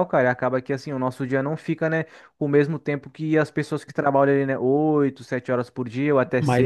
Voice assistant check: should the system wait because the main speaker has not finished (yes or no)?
no